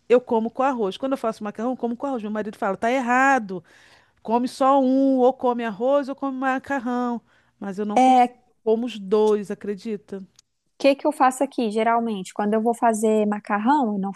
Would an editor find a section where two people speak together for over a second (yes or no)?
no